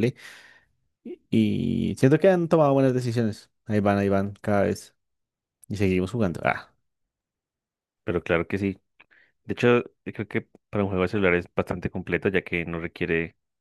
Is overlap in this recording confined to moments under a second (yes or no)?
yes